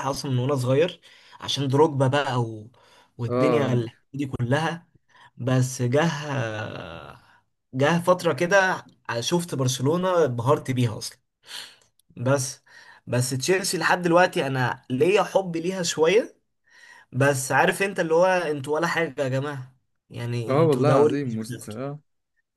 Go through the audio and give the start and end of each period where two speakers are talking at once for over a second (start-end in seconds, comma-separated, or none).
20.5-21.8